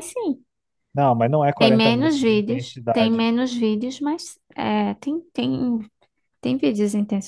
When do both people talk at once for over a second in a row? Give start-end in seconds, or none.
1.6-3.3